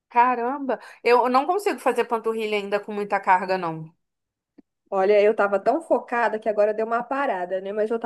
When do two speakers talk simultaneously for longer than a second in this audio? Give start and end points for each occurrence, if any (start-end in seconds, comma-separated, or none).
none